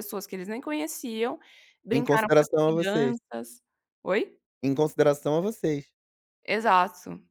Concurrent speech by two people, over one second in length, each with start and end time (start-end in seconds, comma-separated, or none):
1.9-3.2